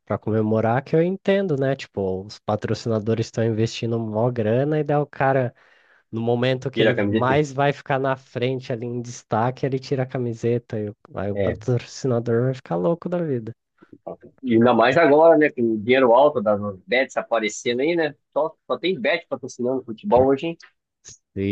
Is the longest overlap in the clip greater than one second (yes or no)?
no